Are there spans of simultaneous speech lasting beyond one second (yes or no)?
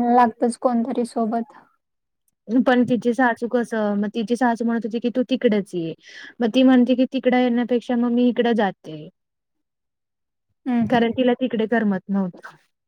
no